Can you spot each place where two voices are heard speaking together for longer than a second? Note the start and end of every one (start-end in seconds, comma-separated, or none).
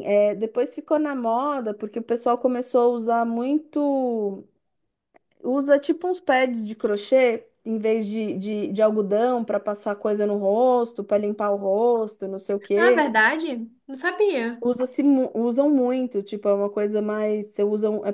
none